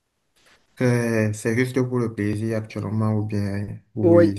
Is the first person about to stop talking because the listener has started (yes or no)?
yes